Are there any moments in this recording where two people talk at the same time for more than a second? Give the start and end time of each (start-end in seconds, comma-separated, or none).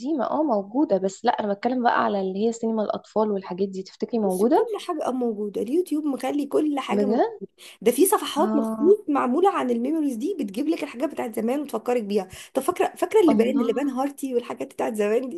none